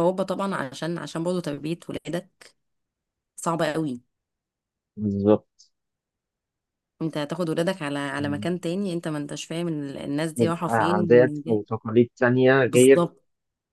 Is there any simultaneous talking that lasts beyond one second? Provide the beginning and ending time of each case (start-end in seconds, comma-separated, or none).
10.4-11.8